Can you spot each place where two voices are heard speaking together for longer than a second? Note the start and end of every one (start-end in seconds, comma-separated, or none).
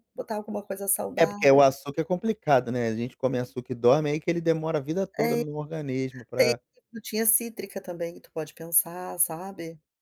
none